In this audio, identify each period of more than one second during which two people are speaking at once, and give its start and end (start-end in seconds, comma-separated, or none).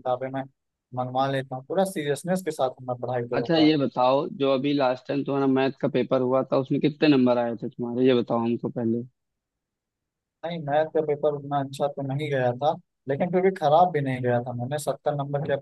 none